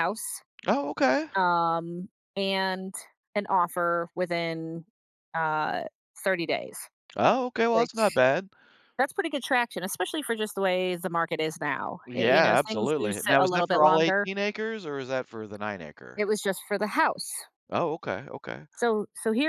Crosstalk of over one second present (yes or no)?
yes